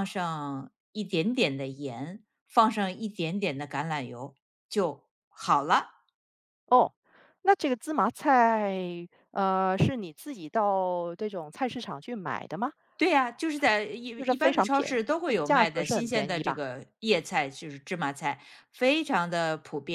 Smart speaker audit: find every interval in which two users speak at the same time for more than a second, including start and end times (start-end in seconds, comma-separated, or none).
14.2-16.6